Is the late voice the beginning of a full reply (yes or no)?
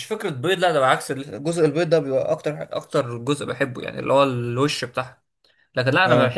no